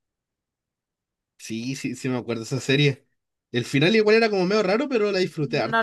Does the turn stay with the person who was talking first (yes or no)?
no